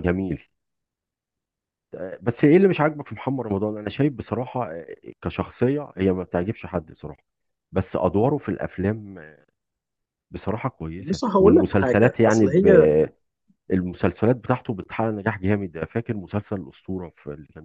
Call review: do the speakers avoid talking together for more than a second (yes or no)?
no